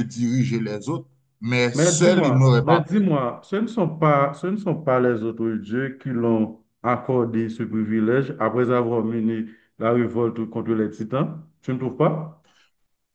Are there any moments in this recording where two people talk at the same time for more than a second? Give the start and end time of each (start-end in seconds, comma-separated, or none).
1.7-3.0